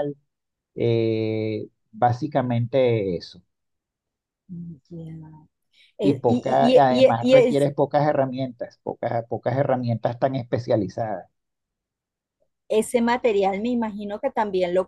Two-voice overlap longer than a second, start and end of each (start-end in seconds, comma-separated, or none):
6.0-7.7